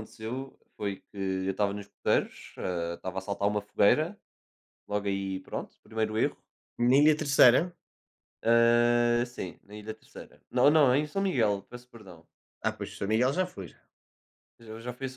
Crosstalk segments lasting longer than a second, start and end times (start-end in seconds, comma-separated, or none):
none